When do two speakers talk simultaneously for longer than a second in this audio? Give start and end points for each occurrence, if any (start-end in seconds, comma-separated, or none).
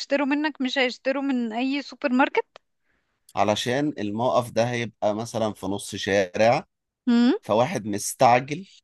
none